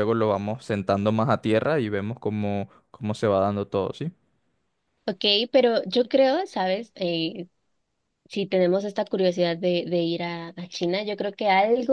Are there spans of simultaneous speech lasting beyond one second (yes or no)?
no